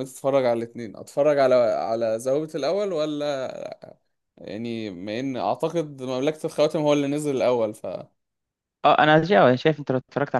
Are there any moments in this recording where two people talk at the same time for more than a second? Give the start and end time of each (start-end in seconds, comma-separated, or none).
none